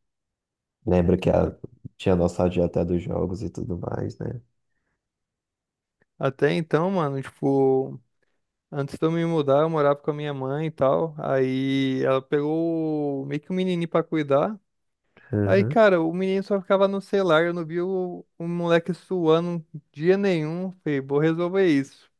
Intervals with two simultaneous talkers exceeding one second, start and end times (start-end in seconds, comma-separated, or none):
none